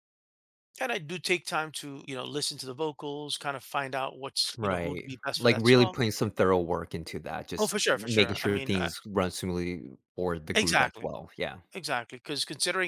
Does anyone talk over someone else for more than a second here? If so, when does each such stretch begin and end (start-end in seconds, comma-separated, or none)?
4.6-6.0, 7.6-8.9